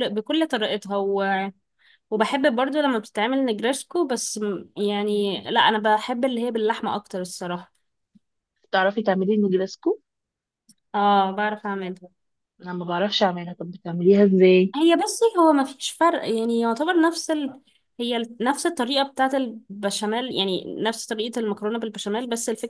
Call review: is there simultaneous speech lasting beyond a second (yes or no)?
no